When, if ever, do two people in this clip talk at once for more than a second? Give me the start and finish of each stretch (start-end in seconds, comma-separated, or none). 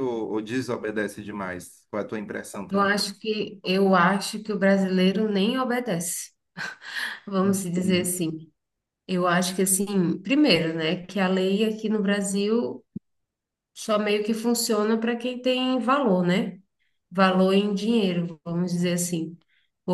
none